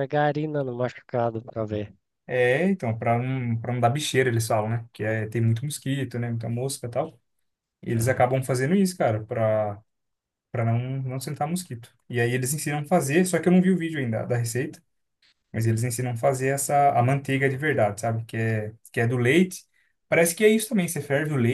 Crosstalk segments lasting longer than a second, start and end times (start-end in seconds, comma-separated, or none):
none